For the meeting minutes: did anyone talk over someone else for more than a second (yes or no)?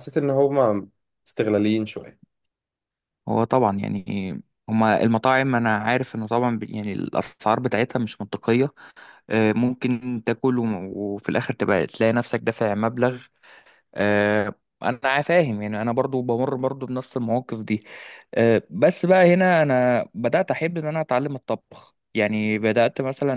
no